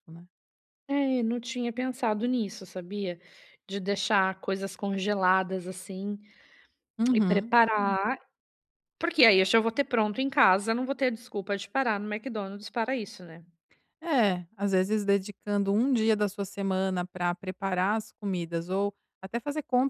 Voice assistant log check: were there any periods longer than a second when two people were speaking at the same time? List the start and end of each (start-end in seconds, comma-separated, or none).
none